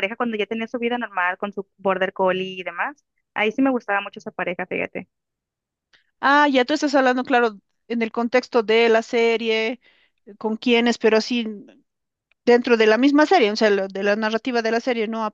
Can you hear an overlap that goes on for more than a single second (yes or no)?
no